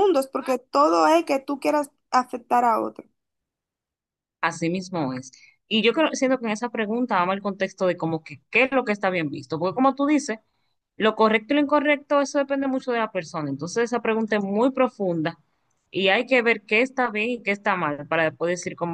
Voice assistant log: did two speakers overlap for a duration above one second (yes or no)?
no